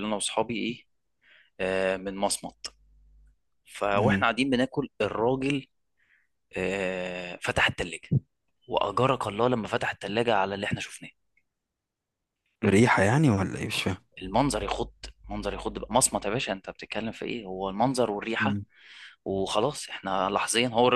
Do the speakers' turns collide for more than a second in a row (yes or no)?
no